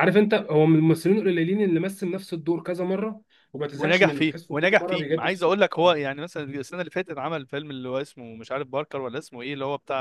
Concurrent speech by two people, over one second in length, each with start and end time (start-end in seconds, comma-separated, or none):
3.8-6.0